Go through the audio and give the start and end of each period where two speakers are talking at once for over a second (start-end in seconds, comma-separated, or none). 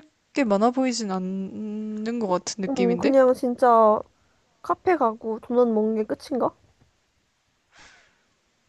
none